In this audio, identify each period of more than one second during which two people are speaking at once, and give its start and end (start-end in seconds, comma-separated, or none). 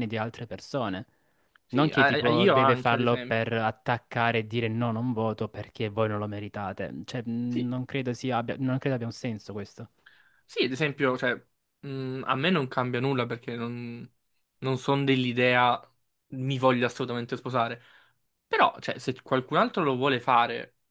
1.7-3.4